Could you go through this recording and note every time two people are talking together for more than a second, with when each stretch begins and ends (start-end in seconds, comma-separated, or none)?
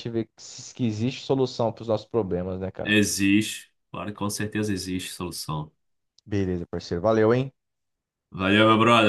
none